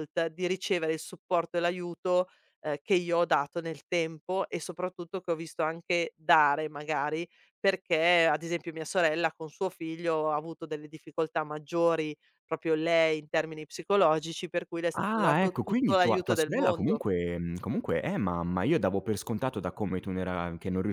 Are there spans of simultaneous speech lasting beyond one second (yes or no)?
yes